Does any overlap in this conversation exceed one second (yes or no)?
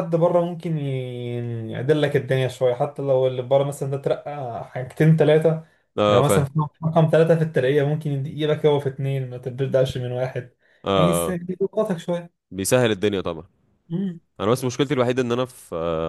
no